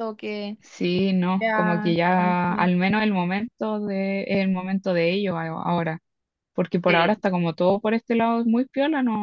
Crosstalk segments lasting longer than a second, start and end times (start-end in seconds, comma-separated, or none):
1.4-2.7